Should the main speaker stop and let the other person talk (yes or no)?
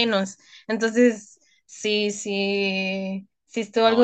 yes